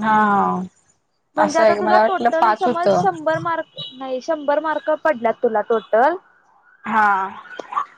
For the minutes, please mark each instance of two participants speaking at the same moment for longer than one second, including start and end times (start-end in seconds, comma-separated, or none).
1.4-3.0